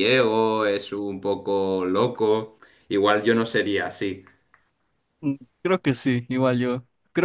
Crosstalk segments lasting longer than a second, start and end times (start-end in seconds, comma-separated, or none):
none